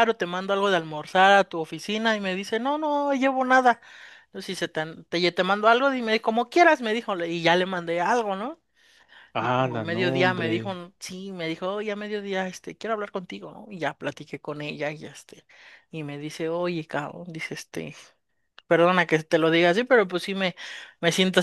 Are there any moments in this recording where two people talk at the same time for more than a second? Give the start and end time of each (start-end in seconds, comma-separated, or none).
9.4-10.8